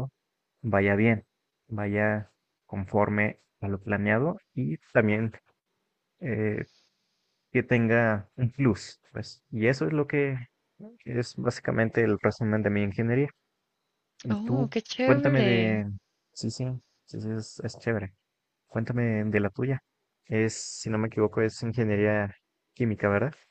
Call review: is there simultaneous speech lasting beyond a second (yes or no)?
yes